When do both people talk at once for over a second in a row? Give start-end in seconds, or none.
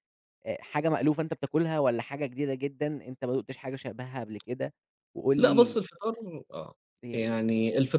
none